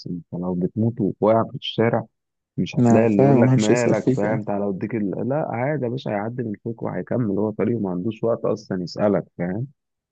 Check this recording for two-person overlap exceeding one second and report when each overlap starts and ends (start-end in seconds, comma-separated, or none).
2.8-4.4